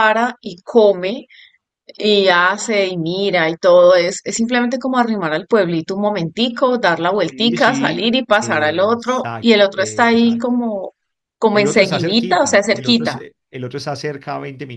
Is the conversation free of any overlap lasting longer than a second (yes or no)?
no